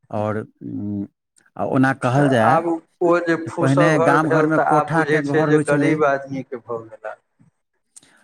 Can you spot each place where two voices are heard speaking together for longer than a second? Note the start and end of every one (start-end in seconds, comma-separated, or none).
3.4-5.9